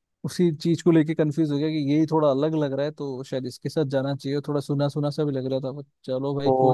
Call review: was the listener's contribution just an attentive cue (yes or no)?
no